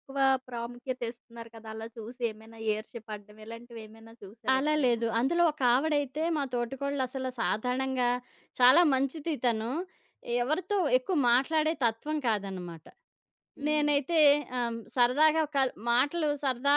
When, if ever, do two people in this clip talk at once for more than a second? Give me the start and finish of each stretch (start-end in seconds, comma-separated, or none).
none